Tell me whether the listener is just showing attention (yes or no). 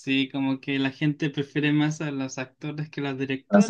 no